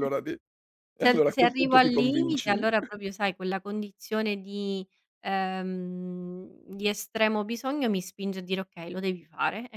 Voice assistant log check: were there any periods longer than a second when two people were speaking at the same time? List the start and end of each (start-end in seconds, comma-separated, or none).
1.0-2.7